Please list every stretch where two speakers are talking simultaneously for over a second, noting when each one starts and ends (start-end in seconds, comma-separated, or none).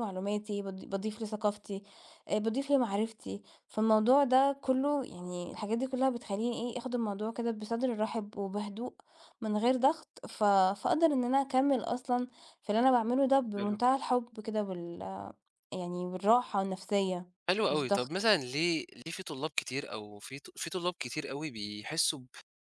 none